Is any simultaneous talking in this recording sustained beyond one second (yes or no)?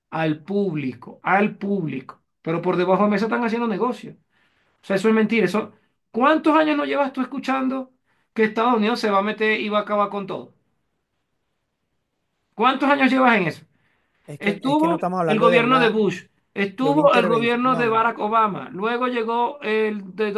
yes